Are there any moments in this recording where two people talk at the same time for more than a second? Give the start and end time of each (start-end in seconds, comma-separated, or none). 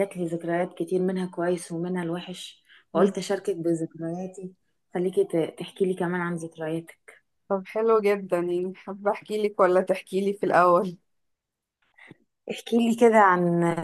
none